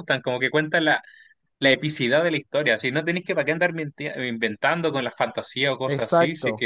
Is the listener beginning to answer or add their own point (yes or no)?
no